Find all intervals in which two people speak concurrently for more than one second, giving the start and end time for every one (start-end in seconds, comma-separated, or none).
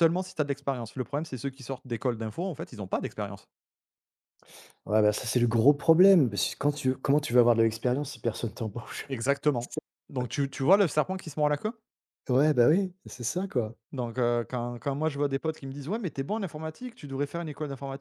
none